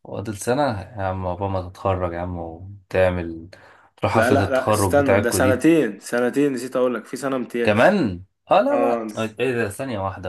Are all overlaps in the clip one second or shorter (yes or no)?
no